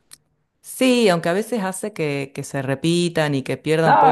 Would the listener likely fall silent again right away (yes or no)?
no